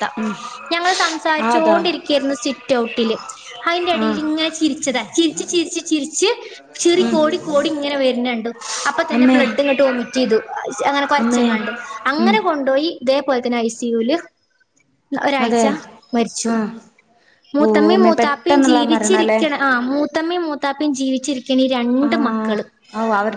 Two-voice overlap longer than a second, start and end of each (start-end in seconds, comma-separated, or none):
17.7-19.4